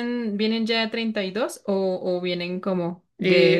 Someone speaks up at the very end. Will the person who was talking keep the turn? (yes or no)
no